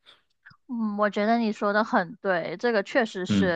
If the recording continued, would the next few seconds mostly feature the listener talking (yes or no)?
no